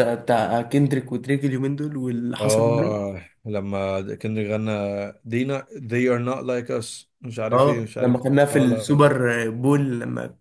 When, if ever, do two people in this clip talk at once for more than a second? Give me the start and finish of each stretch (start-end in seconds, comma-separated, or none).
7.5-9.1